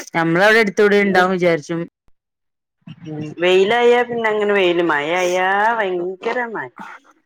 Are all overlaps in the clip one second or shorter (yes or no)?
yes